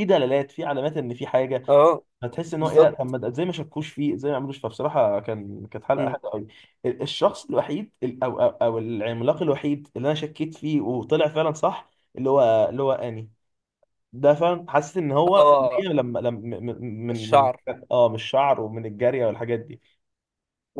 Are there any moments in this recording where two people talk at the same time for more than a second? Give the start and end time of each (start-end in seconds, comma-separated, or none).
none